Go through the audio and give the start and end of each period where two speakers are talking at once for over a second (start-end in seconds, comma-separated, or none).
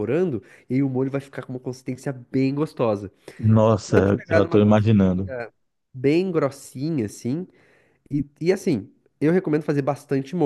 3.8-5.3